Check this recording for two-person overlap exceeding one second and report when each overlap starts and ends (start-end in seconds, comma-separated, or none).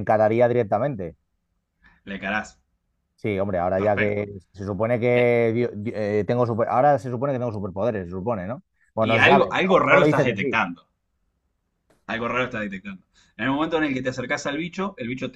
9.0-10.6